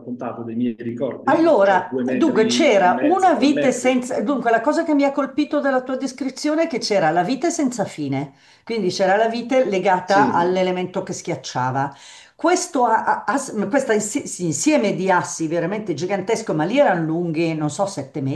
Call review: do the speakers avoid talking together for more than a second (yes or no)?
no